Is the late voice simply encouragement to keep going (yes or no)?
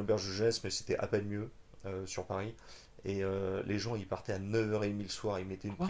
yes